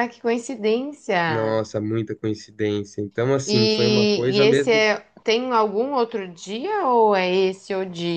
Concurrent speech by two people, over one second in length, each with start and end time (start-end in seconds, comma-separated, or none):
3.5-4.8